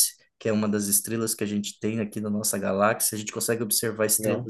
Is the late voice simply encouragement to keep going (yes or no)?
yes